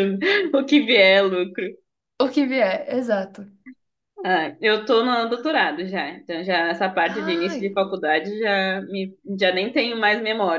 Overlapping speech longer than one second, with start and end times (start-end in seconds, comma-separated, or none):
none